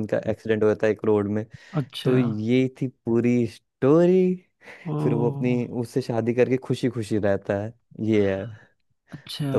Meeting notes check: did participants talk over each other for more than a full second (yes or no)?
no